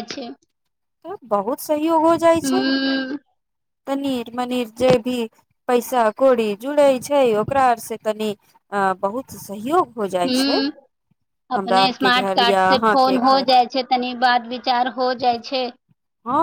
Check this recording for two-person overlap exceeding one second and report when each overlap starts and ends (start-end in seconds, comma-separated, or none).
11.6-13.5